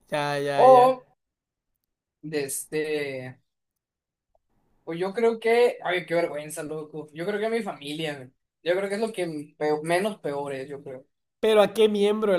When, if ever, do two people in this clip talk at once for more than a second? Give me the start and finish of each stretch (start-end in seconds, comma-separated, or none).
none